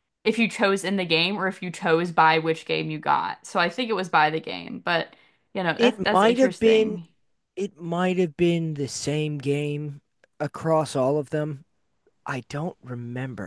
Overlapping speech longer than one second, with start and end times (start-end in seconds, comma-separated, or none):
5.8-7.0